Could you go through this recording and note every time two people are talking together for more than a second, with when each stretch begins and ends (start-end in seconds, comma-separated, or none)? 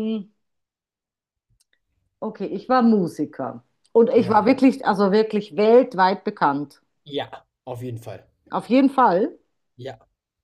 none